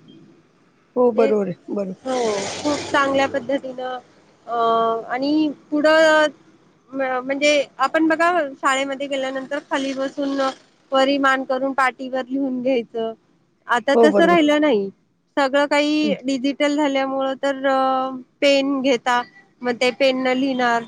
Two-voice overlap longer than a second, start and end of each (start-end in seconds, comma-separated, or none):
none